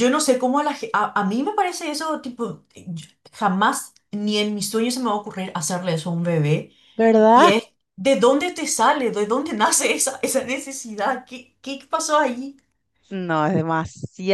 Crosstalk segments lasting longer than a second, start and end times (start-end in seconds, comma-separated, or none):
none